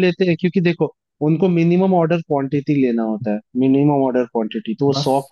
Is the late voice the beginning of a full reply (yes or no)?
no